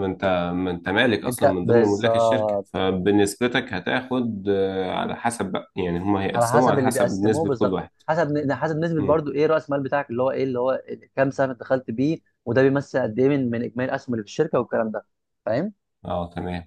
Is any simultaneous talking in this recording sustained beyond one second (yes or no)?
yes